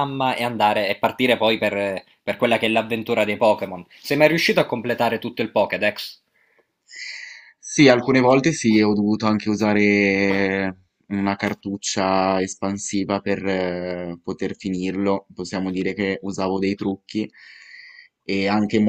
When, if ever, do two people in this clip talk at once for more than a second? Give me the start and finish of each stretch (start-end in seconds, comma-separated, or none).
none